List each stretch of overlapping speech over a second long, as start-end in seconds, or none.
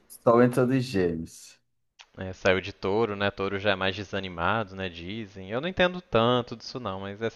none